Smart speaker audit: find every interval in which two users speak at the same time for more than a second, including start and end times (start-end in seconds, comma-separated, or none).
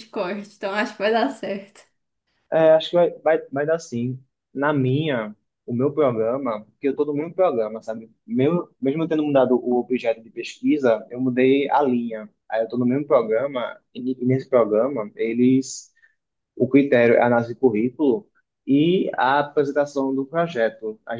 none